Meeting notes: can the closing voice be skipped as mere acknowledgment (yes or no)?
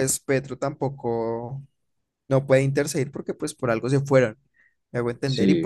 yes